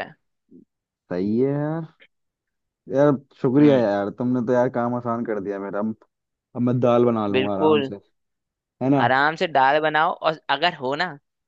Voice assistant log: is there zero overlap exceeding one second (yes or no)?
yes